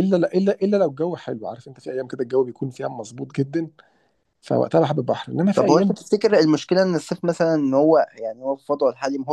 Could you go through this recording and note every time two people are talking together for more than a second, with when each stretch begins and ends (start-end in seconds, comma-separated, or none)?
none